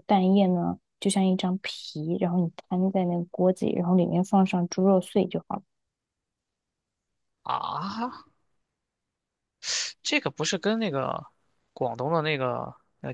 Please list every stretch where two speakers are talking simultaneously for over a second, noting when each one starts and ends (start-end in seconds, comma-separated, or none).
none